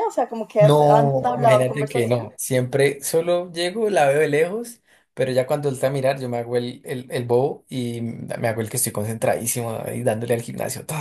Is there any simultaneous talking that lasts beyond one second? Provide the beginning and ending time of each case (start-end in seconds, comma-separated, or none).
0.6-2.3